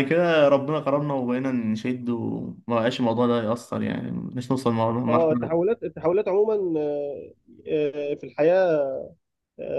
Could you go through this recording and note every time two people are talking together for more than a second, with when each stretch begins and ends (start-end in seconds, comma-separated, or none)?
none